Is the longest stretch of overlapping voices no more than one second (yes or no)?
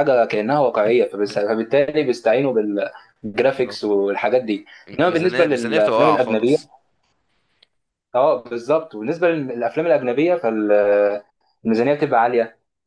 no